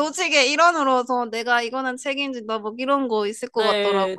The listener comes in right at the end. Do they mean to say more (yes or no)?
yes